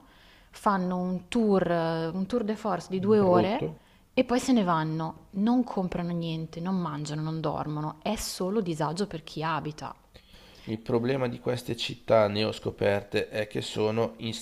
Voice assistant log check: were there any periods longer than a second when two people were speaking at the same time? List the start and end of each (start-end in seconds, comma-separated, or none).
none